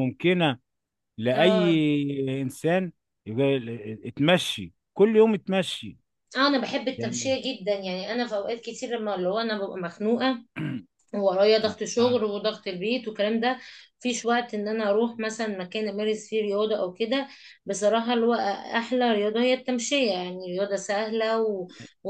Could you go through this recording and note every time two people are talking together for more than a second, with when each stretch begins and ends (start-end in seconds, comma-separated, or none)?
none